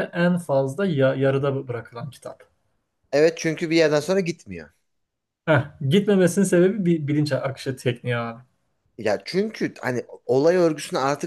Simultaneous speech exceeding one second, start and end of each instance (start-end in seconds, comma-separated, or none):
none